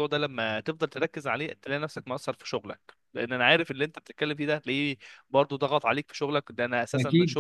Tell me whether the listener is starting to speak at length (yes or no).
no